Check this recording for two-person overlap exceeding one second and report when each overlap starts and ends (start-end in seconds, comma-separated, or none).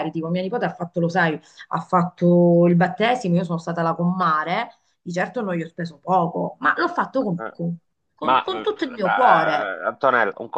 8.2-9.7